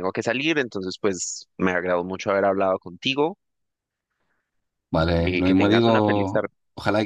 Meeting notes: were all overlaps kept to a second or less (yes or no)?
no